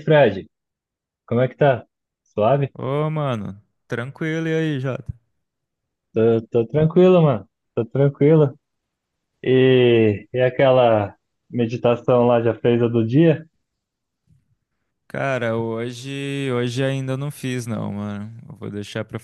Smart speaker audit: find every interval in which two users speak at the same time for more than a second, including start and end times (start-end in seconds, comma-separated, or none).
none